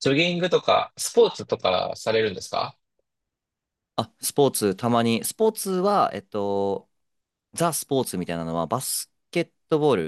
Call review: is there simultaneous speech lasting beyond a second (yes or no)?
no